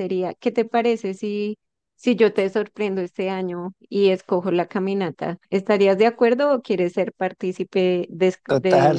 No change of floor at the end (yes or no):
no